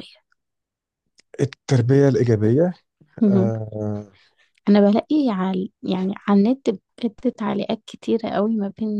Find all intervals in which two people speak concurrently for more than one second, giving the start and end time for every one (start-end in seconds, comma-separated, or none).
none